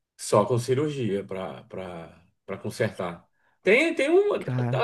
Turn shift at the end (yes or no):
no